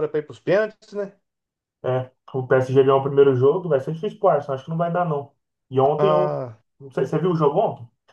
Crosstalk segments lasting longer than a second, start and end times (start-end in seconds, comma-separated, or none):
none